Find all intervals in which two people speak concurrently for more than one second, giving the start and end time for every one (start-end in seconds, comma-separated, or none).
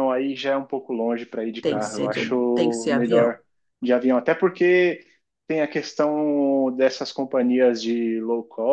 1.6-3.4